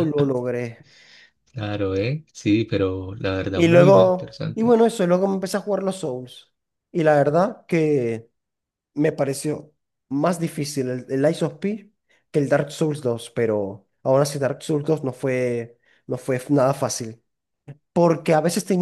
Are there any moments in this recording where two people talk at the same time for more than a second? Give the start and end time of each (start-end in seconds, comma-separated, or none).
3.5-4.8